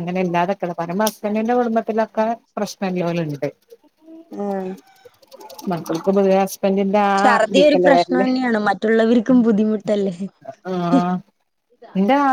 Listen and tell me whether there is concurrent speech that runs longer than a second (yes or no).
no